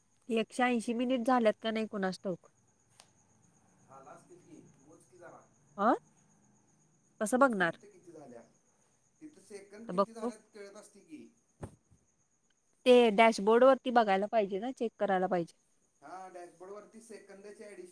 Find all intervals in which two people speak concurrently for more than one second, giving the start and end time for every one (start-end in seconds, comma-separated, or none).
none